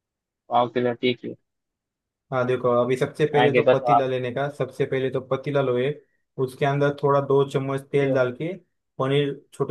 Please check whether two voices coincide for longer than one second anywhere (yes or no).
no